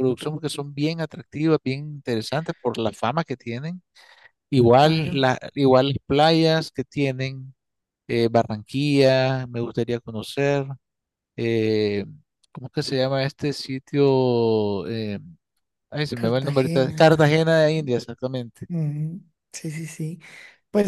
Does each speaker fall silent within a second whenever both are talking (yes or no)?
no